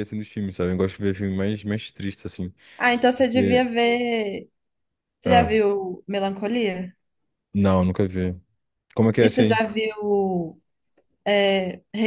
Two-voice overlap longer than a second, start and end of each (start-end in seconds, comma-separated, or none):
none